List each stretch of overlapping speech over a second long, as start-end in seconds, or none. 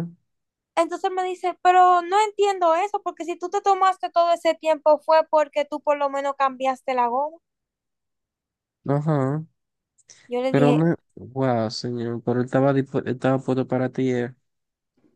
none